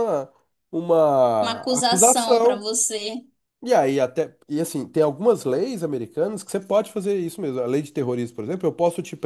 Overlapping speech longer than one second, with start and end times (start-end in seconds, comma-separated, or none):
1.4-2.7